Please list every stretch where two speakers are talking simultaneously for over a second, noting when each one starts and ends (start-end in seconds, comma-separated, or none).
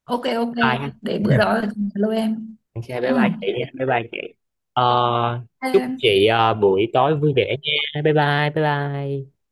none